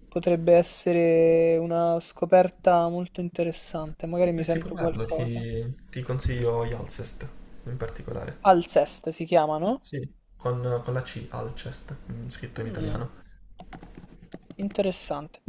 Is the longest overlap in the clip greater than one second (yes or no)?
yes